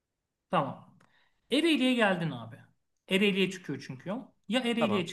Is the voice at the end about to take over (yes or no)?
no